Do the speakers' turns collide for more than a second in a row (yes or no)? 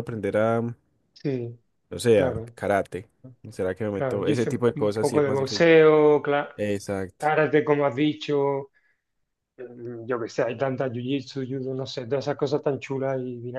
yes